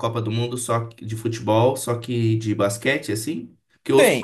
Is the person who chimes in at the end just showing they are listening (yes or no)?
yes